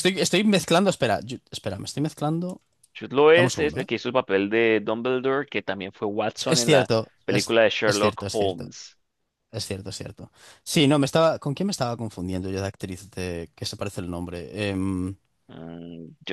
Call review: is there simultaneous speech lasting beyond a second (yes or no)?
yes